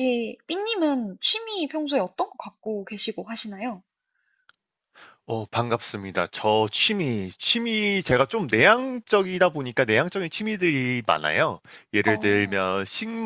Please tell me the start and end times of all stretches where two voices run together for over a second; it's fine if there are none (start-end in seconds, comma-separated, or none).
none